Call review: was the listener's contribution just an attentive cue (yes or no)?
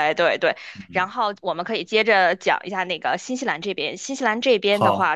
yes